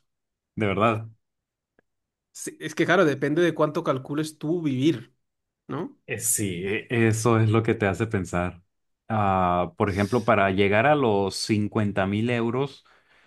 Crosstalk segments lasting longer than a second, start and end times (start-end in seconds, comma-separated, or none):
none